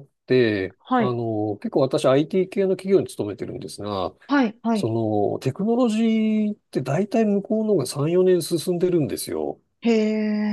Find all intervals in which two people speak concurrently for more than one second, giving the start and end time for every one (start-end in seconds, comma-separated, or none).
none